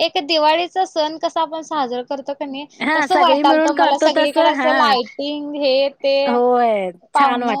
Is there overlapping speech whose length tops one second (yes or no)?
yes